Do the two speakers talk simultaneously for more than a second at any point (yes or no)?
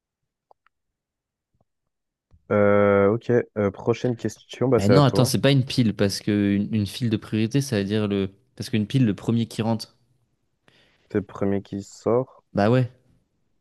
no